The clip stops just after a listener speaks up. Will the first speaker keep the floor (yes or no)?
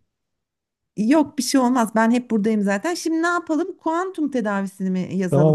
no